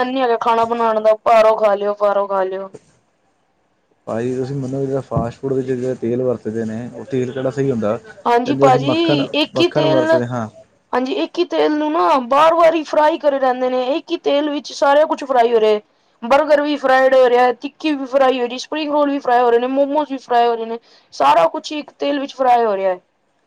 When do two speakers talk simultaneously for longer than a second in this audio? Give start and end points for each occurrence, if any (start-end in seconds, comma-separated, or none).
8.3-10.1